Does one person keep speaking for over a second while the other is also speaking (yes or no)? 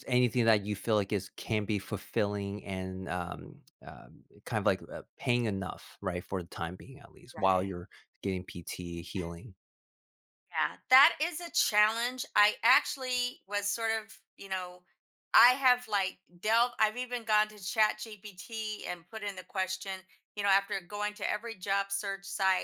no